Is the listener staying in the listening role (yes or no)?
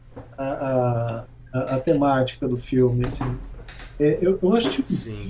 yes